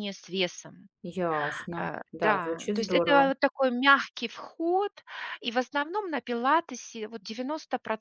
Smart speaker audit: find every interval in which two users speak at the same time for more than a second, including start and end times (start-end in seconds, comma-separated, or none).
1.8-3.3